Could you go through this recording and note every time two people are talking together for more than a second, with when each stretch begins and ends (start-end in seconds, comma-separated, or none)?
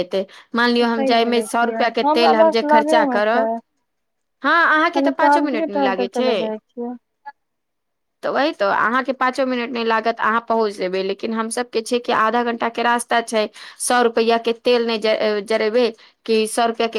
0.9-3.4, 5.0-6.3